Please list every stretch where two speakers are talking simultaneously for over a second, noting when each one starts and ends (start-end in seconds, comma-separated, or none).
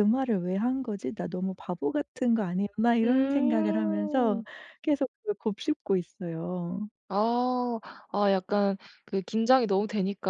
3.0-4.4